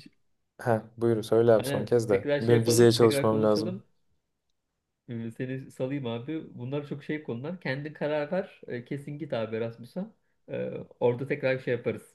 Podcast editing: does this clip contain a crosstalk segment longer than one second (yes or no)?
yes